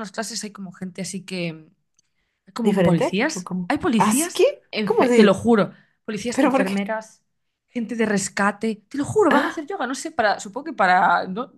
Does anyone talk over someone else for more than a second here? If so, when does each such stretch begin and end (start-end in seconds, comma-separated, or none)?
2.6-5.5